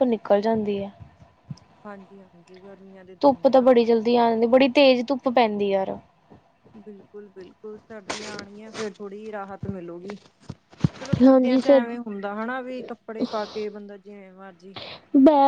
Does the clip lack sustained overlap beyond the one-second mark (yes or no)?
yes